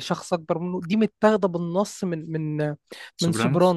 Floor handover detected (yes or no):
no